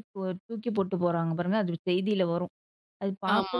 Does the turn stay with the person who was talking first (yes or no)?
yes